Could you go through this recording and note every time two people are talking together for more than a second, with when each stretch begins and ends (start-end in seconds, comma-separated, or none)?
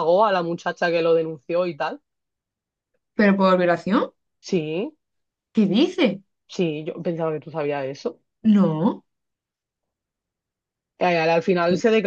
none